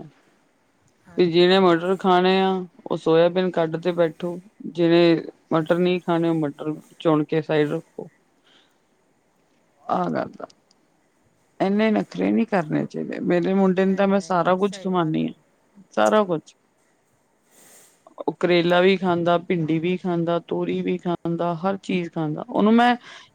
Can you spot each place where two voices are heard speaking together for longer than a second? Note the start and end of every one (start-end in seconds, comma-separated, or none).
13.8-15.3